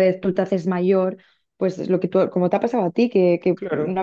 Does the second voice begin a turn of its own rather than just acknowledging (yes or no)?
no